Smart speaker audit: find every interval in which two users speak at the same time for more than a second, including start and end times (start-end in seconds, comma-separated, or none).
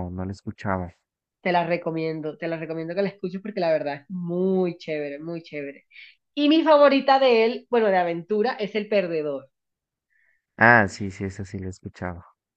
none